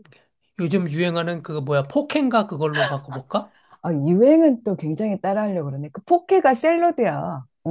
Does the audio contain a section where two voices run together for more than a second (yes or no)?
no